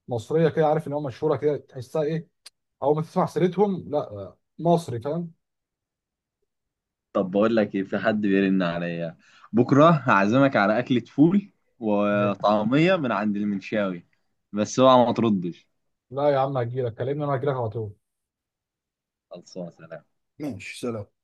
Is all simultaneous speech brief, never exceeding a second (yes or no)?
yes